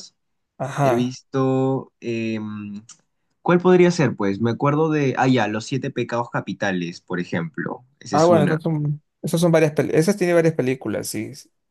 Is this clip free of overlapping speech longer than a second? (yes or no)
yes